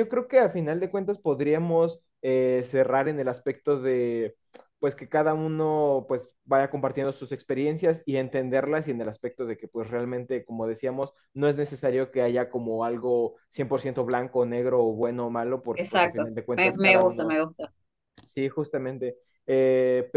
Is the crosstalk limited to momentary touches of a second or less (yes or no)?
no